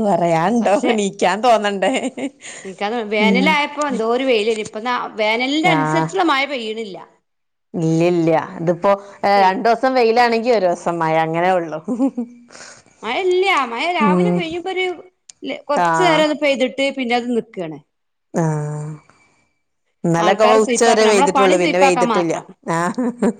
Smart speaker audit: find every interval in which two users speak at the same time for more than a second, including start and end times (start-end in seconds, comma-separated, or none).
20.2-22.3